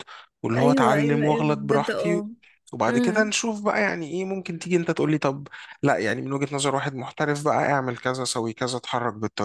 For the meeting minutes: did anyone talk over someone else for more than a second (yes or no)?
yes